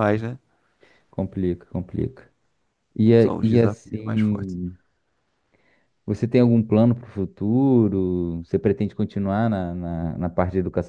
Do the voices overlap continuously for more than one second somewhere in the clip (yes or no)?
yes